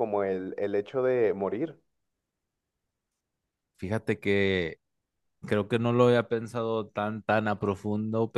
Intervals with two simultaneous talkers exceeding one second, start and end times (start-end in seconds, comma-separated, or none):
none